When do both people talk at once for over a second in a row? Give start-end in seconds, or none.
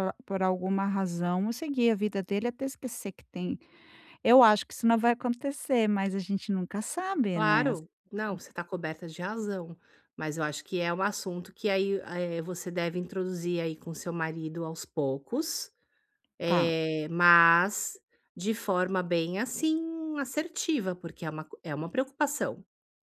none